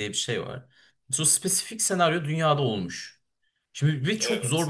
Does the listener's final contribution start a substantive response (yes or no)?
no